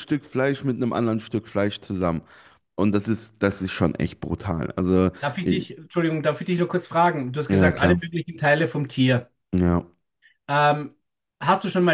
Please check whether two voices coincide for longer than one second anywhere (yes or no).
no